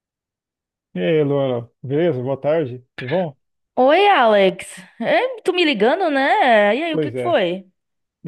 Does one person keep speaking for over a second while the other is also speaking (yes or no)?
no